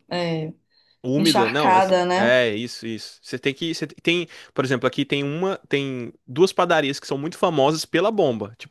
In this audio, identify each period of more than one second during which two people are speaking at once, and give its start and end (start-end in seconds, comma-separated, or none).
1.1-2.4